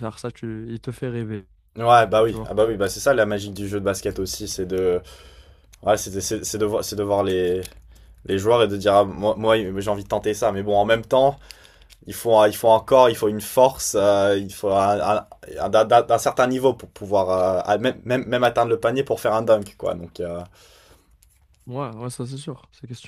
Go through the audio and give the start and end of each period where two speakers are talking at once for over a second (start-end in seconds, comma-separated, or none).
none